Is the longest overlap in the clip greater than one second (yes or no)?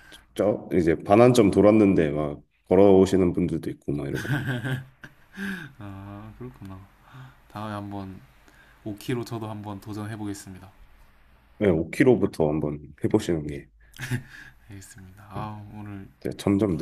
no